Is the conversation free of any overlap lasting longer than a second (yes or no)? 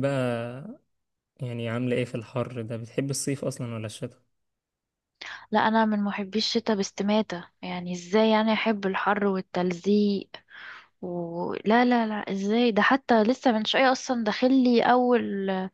yes